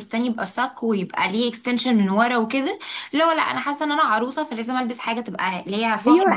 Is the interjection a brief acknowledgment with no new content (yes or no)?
no